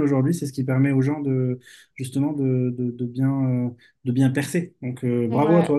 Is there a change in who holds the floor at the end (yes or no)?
no